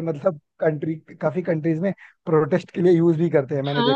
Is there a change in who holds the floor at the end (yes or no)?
yes